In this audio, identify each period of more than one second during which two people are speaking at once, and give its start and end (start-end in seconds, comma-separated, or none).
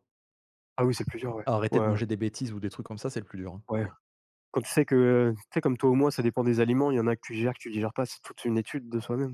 none